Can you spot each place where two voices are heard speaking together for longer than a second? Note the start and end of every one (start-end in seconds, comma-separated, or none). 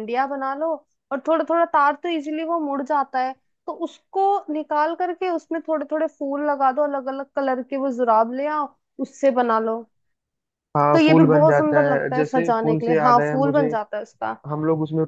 10.9-13.7